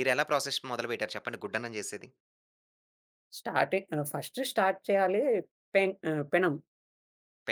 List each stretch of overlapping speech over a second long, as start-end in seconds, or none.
none